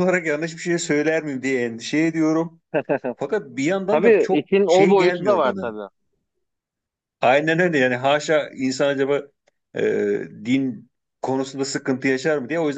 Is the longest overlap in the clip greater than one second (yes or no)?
yes